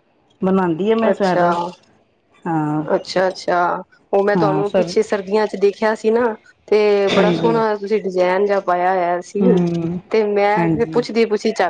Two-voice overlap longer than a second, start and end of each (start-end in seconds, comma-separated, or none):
none